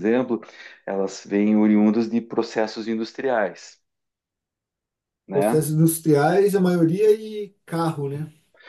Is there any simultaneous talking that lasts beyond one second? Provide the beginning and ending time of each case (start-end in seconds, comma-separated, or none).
none